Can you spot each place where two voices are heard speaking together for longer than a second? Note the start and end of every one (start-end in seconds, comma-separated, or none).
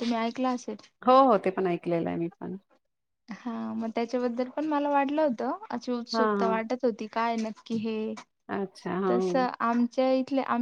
none